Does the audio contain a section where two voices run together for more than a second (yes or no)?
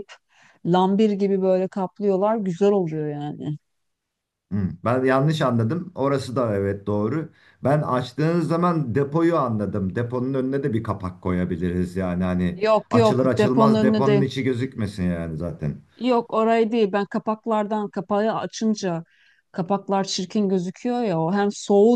yes